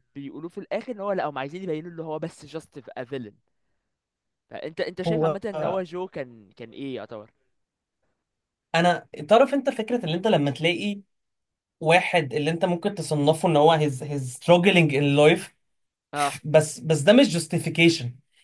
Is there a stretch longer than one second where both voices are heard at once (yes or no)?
no